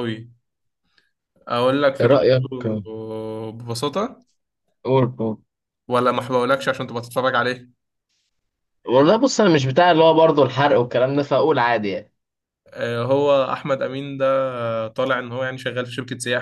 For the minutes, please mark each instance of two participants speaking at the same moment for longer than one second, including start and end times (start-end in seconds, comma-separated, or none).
none